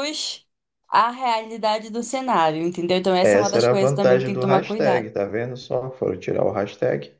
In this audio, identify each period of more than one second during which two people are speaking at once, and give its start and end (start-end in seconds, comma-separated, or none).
3.2-5.1